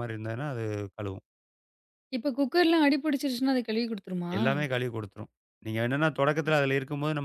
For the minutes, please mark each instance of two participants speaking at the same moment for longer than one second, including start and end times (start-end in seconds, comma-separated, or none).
none